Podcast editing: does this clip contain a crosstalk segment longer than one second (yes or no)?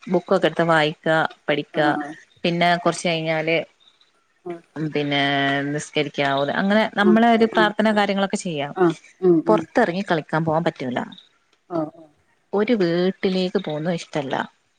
no